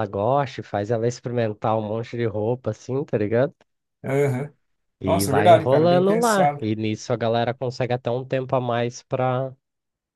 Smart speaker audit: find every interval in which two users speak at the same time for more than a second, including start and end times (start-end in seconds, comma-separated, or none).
5.0-6.7